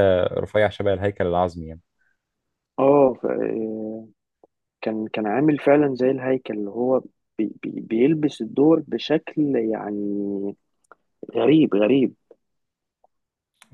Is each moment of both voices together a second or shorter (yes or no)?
yes